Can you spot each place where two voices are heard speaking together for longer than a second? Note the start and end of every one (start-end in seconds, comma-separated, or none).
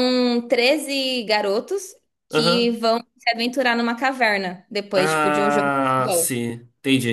4.9-6.3